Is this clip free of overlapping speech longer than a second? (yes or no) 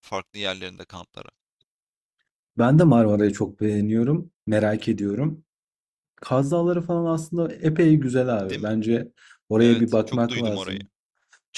no